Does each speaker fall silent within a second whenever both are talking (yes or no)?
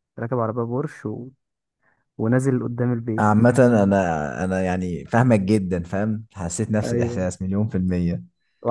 yes